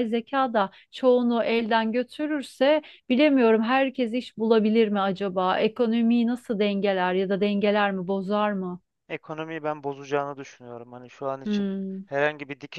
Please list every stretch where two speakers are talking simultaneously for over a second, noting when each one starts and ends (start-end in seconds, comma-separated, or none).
none